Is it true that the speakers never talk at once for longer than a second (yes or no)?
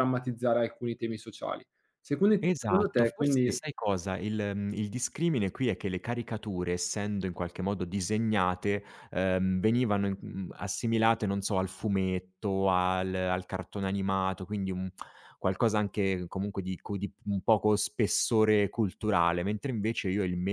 no